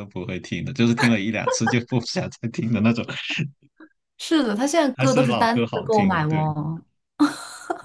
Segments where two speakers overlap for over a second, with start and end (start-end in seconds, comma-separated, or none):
5.0-6.5